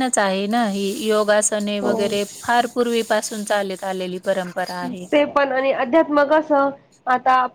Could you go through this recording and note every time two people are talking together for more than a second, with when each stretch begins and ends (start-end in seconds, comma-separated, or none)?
none